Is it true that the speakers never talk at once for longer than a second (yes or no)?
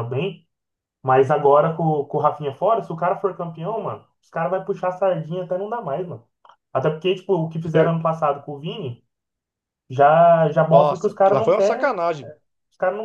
no